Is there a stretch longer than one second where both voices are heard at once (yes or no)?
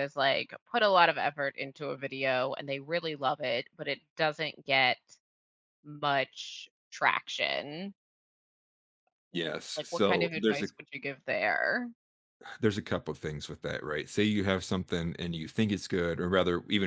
yes